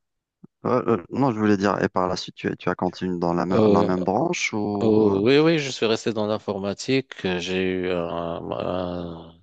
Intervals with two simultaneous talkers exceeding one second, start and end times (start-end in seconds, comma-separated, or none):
none